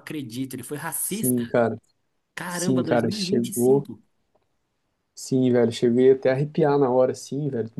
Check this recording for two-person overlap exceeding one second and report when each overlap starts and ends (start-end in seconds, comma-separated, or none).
2.5-3.9